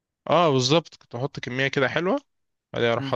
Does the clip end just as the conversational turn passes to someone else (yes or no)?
no